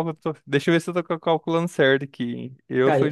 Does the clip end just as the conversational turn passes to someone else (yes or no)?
no